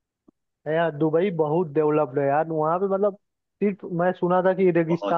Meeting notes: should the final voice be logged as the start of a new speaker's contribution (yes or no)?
no